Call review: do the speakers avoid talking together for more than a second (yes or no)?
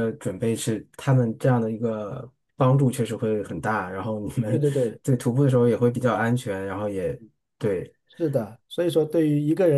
yes